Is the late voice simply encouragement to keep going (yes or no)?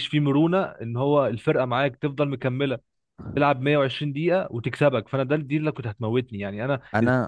yes